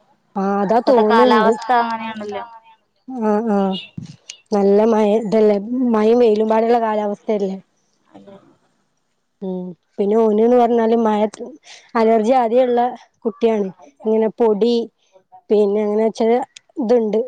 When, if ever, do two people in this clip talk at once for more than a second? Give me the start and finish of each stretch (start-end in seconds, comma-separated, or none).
0.8-2.5